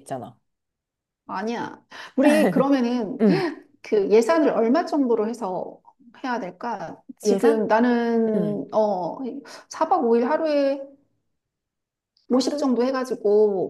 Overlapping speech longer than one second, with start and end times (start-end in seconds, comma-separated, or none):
none